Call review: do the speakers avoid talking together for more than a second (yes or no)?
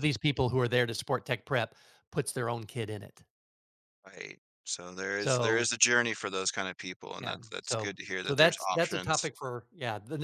no